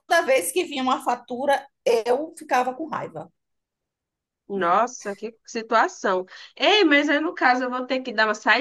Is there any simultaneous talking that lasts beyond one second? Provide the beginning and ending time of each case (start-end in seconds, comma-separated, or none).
none